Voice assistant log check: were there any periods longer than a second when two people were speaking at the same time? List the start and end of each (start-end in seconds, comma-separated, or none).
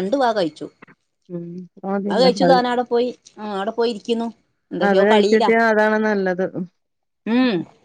none